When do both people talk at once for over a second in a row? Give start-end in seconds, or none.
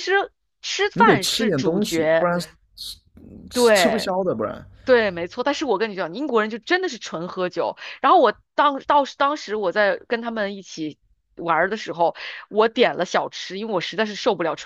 0.9-2.3